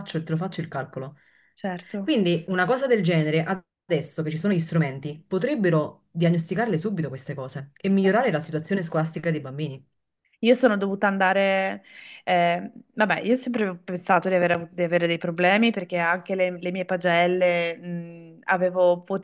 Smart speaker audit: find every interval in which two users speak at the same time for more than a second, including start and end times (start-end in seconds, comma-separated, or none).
none